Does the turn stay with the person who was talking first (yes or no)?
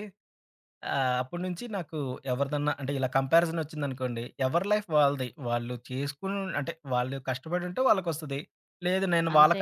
yes